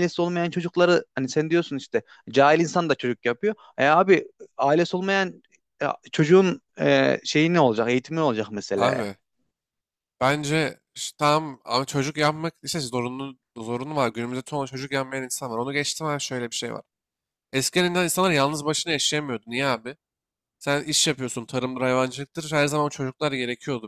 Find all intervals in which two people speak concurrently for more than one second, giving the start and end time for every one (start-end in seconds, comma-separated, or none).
none